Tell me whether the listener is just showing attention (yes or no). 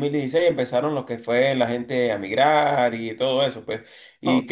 no